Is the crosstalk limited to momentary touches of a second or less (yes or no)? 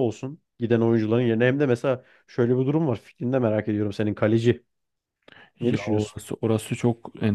yes